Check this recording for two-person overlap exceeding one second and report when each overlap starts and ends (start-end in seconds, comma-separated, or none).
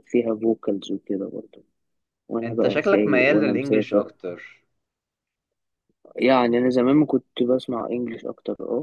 2.4-4.0